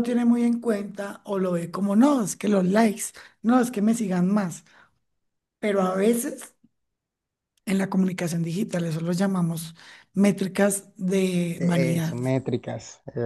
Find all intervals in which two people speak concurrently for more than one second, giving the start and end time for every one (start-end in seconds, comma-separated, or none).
none